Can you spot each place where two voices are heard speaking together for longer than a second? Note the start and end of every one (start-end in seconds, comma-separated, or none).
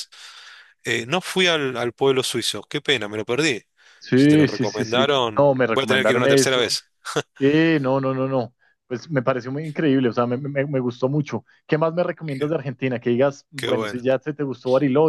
4.1-6.8